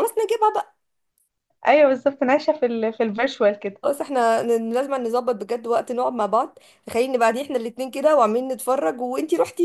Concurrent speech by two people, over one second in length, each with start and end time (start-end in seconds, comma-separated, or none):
none